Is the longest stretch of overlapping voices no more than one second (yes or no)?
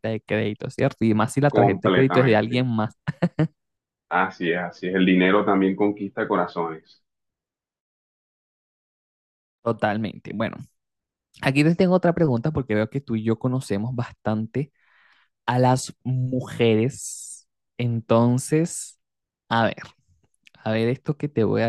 no